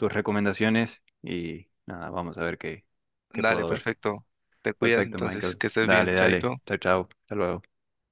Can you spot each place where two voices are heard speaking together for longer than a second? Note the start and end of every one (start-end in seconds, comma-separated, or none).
4.8-6.6